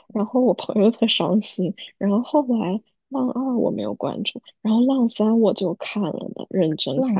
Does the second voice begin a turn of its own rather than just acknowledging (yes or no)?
yes